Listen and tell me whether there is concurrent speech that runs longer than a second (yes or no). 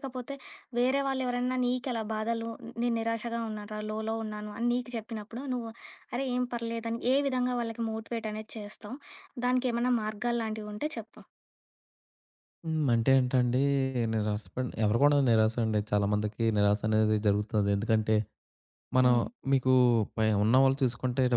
no